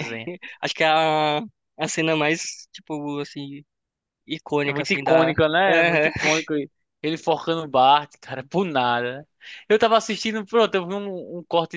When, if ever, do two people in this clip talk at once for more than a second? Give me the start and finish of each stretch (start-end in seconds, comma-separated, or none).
4.6-6.1